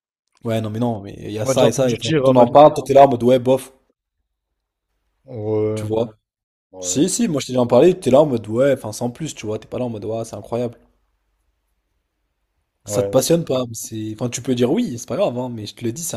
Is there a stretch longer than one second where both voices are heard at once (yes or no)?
yes